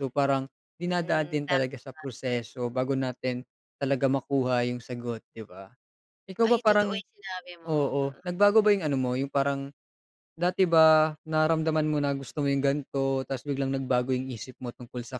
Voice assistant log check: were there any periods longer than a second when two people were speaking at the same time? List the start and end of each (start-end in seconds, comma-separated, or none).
none